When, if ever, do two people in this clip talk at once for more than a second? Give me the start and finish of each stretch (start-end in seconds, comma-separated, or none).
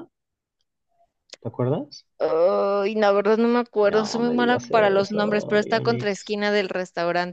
3.9-6.3